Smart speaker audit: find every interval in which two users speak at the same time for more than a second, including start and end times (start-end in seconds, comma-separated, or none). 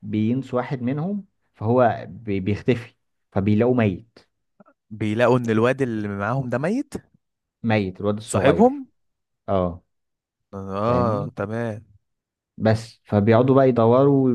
none